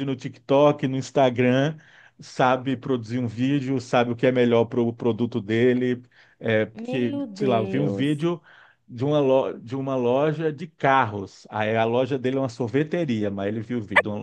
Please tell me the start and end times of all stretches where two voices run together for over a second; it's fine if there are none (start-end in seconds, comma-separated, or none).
6.7-8.3